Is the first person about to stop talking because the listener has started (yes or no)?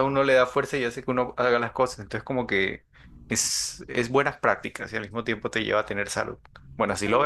yes